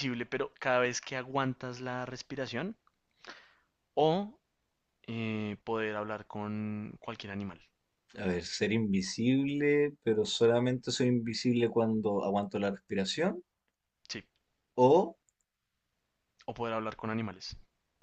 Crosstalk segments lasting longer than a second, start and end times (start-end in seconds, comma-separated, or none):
none